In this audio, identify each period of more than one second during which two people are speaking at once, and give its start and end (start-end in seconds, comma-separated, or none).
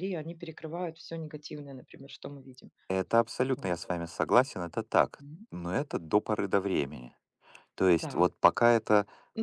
none